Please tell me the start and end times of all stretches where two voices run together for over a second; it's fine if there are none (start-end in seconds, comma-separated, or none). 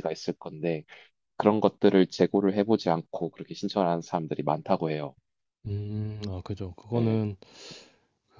none